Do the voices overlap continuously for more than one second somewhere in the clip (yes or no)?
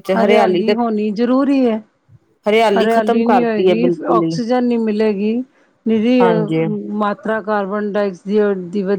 yes